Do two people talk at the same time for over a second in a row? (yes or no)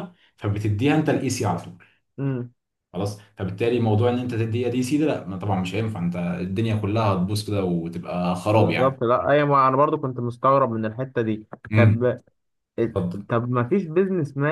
no